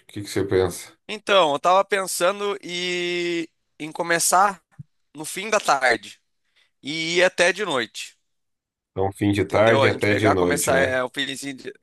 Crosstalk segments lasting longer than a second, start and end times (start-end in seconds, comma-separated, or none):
9.4-11.0